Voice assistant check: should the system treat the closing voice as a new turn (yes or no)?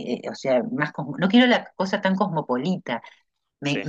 no